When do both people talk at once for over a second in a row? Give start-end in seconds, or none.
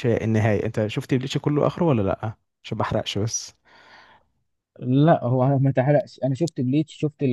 none